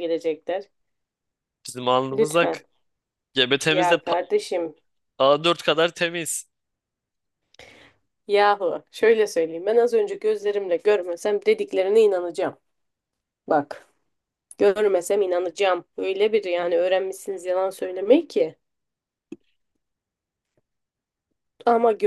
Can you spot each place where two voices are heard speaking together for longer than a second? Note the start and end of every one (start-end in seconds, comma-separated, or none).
none